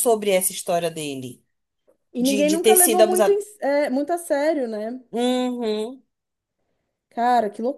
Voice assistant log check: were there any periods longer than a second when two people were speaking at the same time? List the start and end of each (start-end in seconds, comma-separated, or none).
2.2-3.4